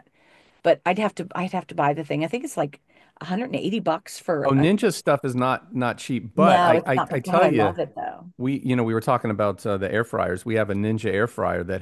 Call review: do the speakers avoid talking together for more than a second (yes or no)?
no